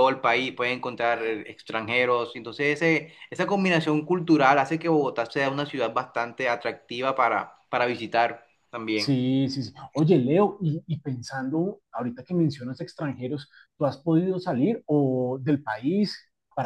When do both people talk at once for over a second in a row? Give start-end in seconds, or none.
none